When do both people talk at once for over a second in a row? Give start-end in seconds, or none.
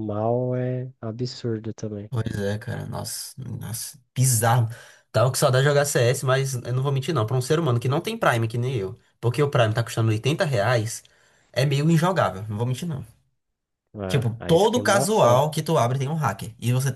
14.1-15.4